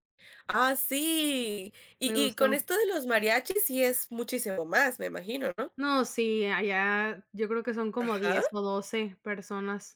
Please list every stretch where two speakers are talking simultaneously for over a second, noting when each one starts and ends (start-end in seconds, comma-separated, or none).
none